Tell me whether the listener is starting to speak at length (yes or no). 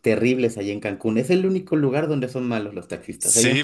yes